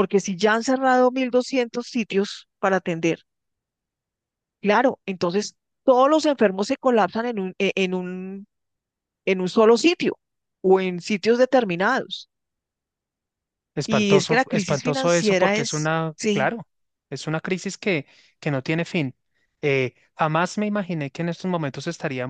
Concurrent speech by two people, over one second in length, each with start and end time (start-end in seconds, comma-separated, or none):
13.8-16.5